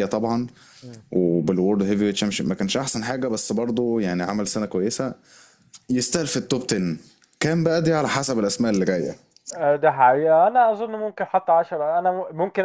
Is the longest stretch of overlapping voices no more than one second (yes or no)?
yes